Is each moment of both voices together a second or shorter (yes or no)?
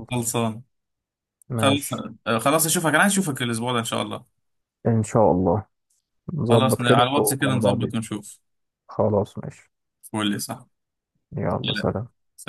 no